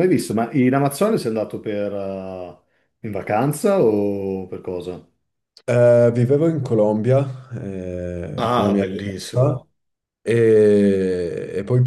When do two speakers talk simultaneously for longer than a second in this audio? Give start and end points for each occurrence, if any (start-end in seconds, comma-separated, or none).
8.4-9.7